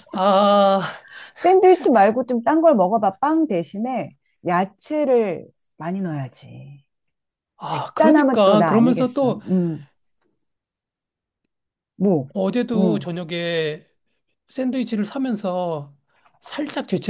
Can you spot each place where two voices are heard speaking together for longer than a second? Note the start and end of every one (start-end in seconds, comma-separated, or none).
7.7-9.4